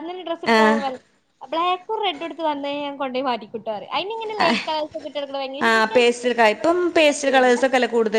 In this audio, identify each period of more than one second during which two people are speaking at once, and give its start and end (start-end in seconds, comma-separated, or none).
5.7-7.6